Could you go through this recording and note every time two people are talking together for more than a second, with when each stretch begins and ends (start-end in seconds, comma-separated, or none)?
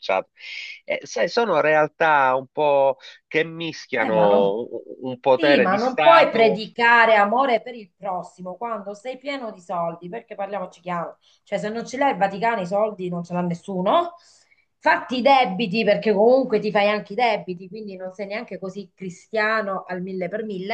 5.3-6.6